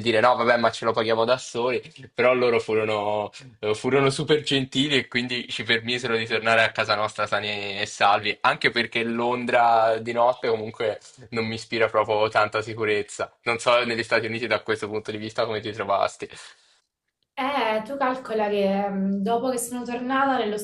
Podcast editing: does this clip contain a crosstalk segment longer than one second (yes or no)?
no